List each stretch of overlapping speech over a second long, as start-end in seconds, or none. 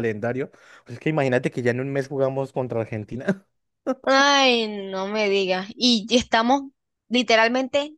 none